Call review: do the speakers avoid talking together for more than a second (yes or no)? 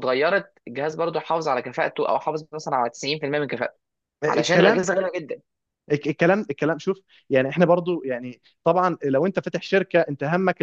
yes